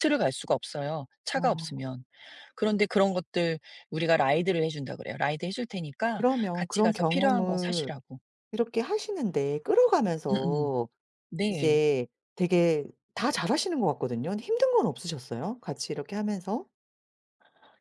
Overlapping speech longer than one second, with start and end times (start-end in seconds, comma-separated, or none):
6.1-8.0